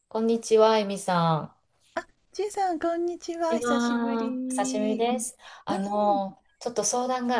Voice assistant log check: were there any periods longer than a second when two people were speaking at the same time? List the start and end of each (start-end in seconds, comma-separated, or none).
3.5-5.0